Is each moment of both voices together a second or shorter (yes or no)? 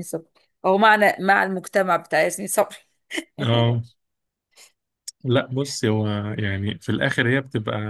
yes